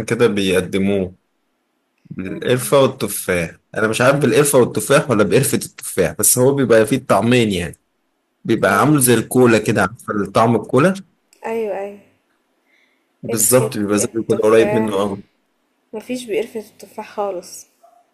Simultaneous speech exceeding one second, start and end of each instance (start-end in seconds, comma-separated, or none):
13.3-15.0